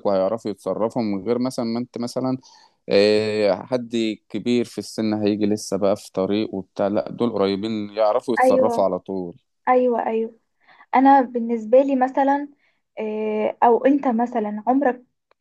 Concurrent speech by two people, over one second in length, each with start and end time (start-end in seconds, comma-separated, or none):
none